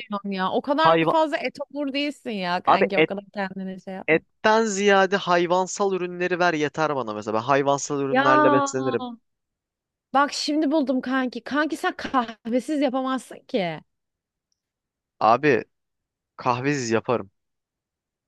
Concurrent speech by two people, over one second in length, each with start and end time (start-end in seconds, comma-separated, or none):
none